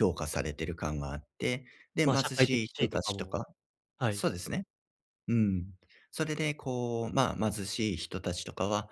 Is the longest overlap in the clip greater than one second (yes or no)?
yes